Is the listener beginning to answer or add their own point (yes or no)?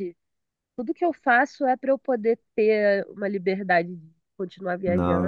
yes